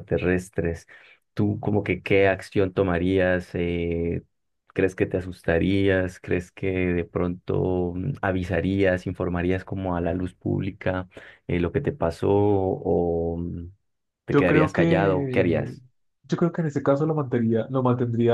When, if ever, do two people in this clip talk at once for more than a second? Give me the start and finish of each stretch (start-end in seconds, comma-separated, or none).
14.3-15.7